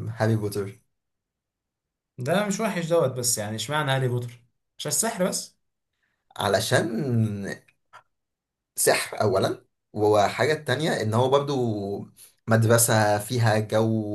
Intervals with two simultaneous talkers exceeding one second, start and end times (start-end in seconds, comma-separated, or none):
none